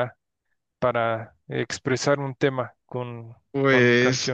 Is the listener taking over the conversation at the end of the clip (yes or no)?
yes